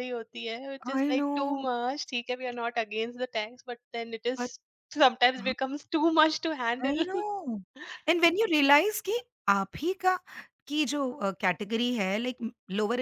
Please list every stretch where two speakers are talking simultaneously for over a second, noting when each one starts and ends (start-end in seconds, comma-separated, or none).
none